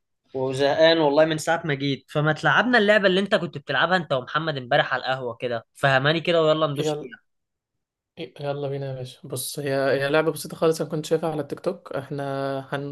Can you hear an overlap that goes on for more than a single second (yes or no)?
no